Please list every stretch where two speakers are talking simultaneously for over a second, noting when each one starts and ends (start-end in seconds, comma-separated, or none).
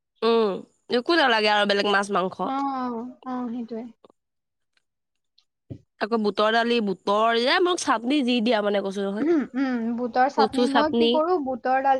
none